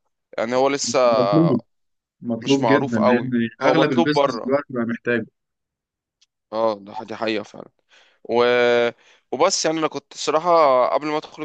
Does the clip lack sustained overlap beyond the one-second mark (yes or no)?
no